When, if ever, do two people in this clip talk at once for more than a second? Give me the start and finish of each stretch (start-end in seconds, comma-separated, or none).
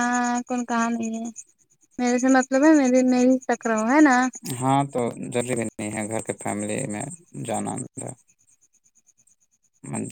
none